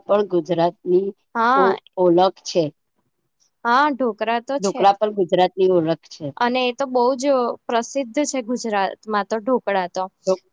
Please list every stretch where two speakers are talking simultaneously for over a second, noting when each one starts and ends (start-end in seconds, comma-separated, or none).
none